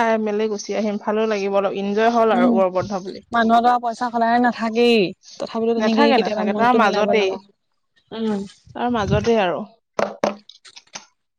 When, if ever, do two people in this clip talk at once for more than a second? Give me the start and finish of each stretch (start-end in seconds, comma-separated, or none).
5.8-7.3